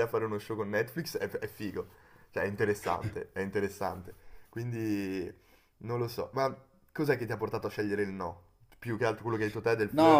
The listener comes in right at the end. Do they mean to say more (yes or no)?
yes